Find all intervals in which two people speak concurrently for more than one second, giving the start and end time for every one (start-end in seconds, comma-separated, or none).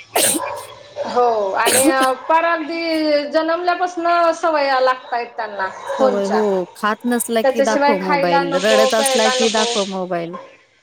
7.4-9.7